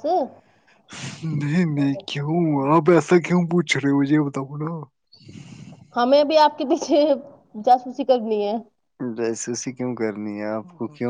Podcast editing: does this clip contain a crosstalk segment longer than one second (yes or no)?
no